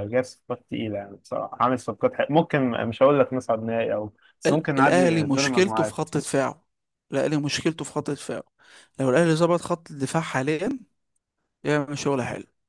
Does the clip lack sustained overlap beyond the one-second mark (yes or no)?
no